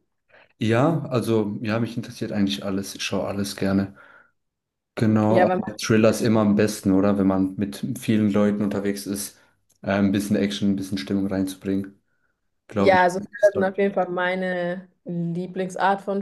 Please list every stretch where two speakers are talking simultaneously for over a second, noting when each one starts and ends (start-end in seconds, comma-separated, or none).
12.8-14.2